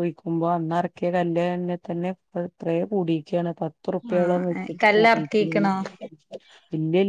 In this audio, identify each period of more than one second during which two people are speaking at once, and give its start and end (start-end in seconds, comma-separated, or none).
4.2-5.6